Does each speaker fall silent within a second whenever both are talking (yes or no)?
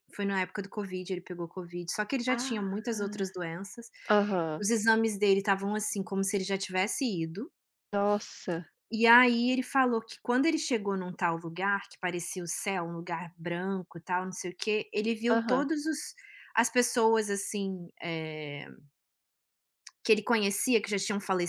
yes